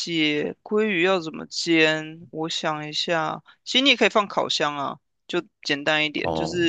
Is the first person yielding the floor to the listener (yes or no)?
no